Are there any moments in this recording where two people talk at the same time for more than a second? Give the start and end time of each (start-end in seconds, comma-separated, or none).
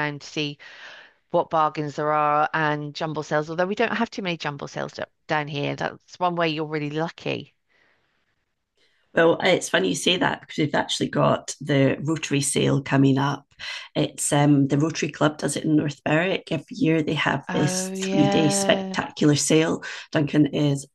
17.5-19.0